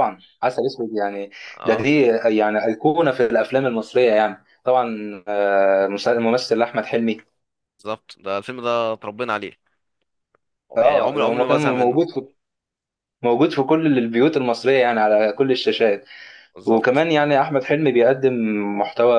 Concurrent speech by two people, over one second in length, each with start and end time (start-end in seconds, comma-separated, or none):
10.8-12.0